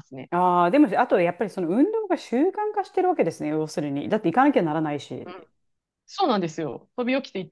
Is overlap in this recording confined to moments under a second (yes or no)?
yes